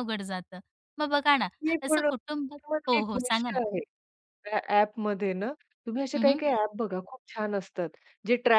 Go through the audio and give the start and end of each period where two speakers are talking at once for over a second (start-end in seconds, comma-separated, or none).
1.9-3.6